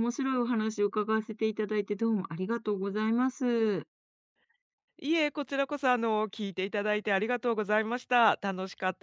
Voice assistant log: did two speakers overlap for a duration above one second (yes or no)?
no